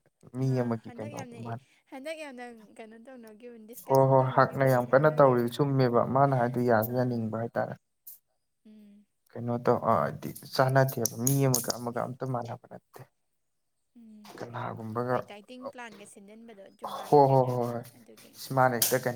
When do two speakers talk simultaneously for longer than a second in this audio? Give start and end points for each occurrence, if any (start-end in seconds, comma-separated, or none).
3.9-5.5